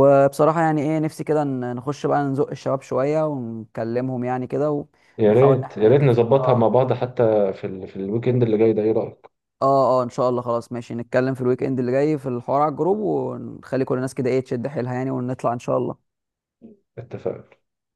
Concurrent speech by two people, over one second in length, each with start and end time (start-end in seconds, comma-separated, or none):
5.3-6.8